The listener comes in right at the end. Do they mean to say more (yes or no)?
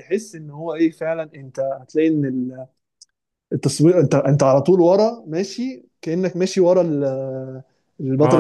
yes